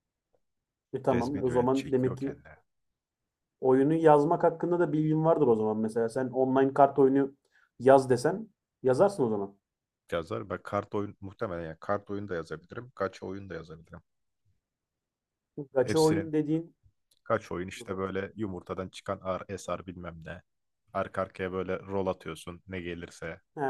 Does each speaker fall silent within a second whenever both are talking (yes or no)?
no